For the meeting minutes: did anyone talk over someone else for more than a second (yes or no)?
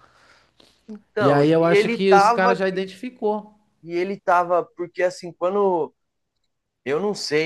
yes